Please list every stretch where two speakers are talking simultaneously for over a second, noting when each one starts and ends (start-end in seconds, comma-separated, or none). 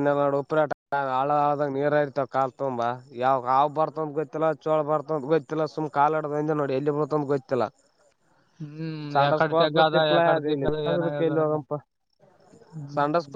9.2-11.6